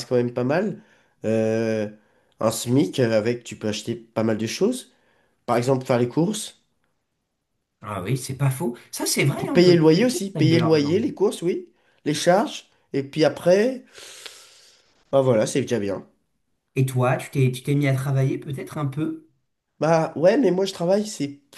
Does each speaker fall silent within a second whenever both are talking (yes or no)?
no